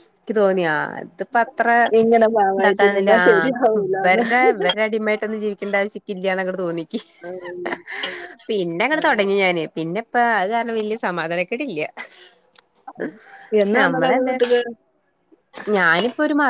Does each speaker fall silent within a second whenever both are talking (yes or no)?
no